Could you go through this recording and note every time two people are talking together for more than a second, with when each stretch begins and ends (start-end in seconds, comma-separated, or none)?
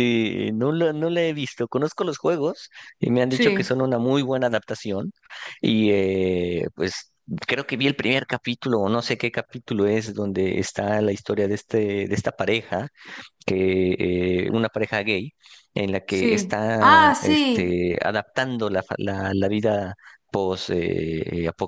16.1-17.8